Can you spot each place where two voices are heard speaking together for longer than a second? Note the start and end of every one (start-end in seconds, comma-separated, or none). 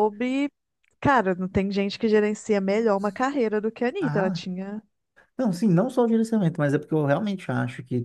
none